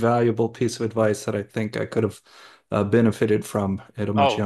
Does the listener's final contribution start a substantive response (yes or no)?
yes